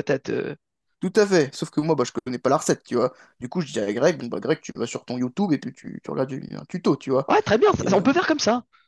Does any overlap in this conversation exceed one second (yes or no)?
no